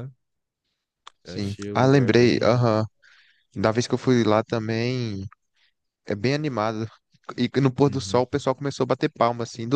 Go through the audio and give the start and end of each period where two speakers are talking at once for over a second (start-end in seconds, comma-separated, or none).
1.2-2.7